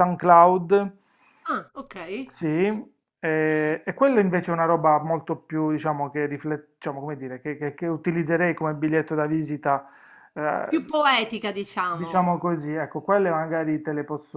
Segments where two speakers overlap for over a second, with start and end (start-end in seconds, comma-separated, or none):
none